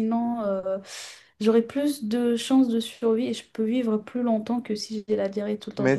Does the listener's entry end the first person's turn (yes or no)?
yes